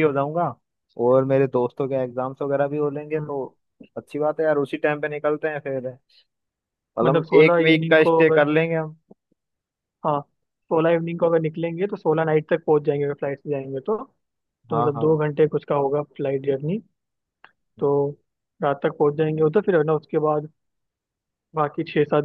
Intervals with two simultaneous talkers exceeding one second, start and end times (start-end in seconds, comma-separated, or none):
7.0-8.4